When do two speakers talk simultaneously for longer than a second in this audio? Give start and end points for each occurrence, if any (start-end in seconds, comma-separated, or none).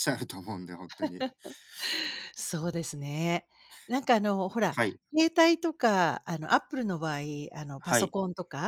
none